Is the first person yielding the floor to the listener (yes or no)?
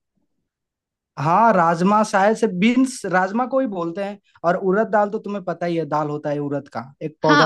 yes